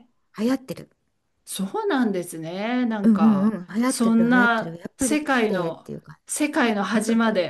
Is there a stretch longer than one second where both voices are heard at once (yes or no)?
yes